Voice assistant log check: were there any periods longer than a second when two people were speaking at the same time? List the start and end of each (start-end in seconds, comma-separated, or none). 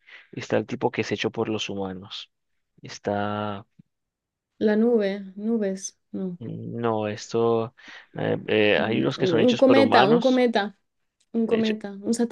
8.7-10.4